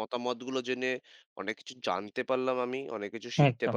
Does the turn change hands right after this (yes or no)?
no